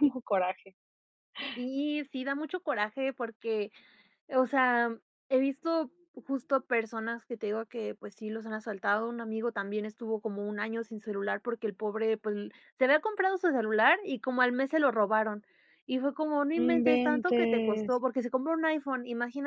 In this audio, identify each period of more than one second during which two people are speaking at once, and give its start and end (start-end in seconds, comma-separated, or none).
16.5-18.0